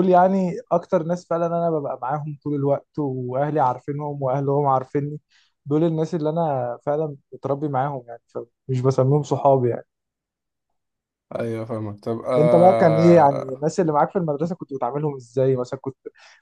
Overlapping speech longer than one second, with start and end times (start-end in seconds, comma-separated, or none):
12.4-13.6